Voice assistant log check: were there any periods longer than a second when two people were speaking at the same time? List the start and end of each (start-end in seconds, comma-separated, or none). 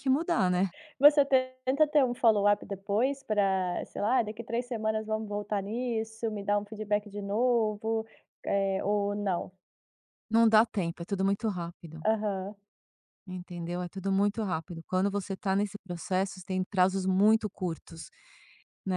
none